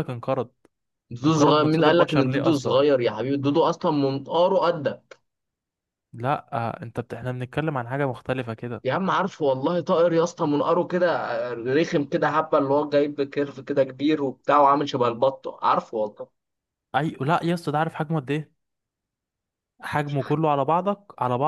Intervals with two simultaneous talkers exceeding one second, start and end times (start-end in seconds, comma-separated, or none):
1.2-2.8